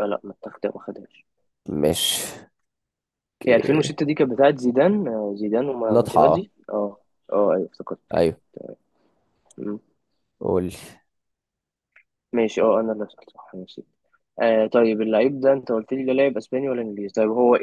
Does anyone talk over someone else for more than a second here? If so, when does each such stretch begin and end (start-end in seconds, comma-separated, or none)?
none